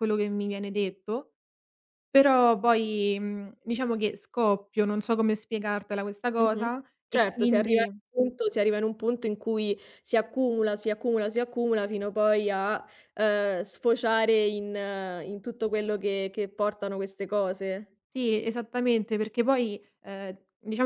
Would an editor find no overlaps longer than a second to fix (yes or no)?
no